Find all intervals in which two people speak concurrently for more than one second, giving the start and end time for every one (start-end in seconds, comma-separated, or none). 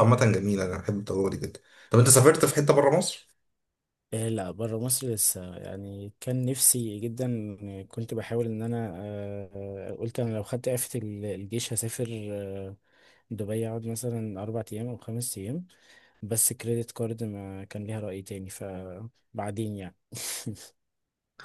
none